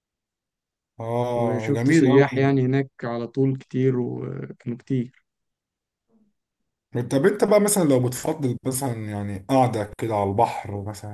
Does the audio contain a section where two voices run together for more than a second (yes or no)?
yes